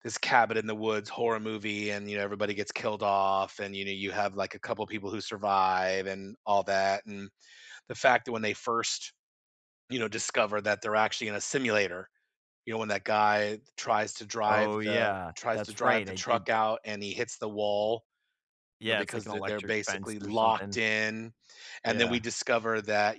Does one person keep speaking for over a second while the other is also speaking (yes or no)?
yes